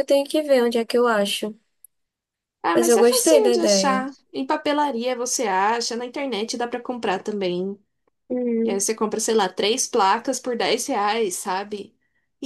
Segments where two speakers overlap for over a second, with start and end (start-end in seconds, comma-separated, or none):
2.7-4.0